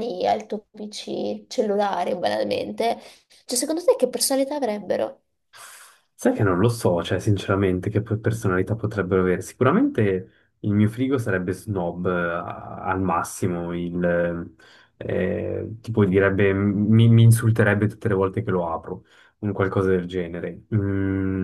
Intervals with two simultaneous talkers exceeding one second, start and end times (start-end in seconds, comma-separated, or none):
none